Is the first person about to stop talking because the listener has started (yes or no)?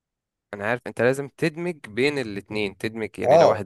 no